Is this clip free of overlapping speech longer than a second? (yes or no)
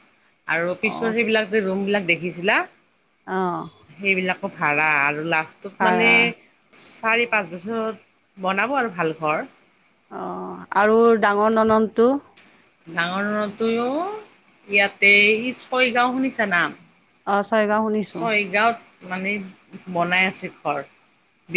yes